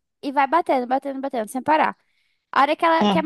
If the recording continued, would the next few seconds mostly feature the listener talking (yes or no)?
no